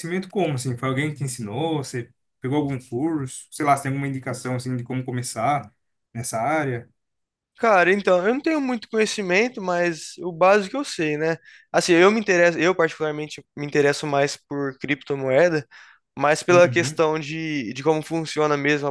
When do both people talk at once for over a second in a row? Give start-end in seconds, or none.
none